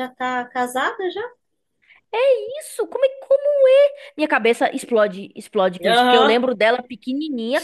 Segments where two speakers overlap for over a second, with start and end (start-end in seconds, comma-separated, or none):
none